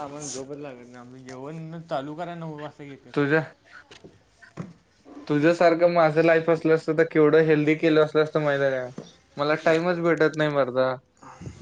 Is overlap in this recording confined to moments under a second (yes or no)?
yes